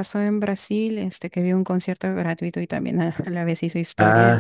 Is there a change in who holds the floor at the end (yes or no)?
yes